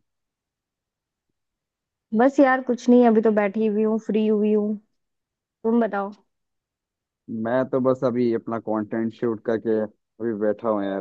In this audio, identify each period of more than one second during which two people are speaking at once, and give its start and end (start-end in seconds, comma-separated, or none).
none